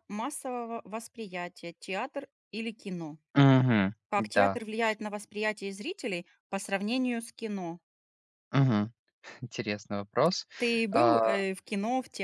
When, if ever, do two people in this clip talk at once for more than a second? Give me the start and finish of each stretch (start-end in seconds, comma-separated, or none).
none